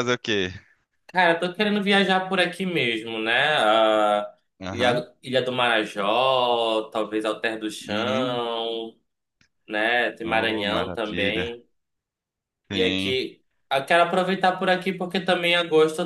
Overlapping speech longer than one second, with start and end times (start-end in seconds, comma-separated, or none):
10.2-11.6